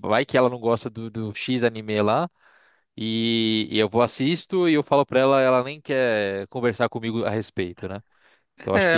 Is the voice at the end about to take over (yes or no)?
yes